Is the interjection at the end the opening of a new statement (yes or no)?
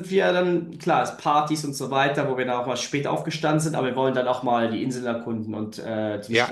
yes